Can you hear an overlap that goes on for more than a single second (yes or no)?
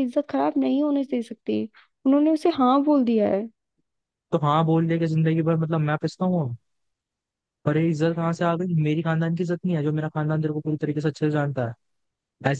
no